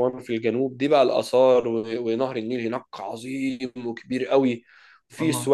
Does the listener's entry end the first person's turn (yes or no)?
no